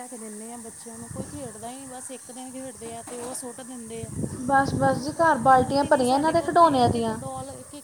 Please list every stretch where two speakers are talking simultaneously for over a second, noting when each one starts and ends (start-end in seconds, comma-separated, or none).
4.8-7.2